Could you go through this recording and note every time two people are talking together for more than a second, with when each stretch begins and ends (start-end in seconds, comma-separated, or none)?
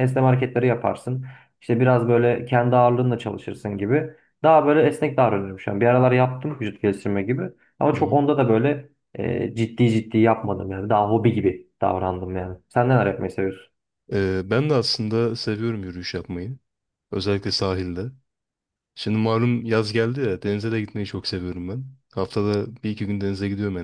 none